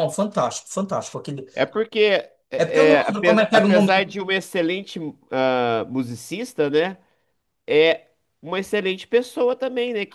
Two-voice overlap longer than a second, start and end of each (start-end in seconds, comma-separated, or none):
2.6-4.1